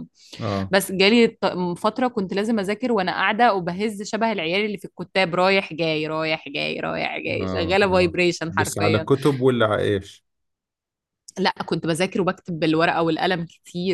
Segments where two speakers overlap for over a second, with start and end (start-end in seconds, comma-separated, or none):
7.4-9.1